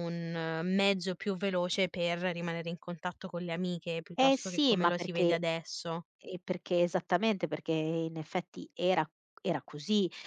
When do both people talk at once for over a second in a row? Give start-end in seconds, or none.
4.2-5.4